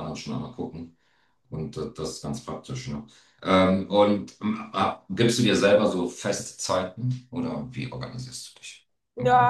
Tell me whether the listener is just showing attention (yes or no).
no